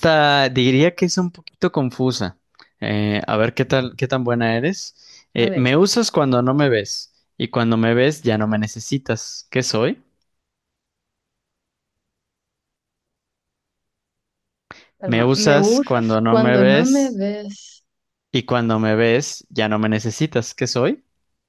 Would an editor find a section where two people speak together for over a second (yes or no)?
yes